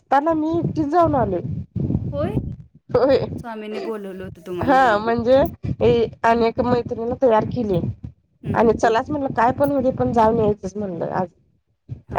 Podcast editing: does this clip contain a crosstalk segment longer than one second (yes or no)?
no